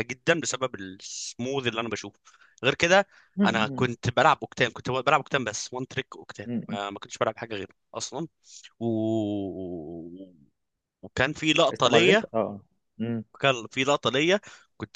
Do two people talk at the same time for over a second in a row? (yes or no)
no